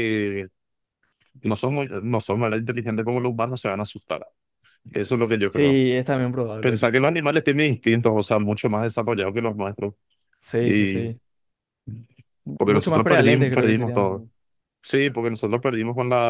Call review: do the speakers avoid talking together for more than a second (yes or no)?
no